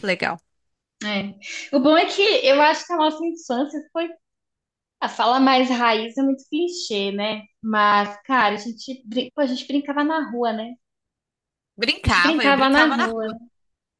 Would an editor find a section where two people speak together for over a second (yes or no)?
yes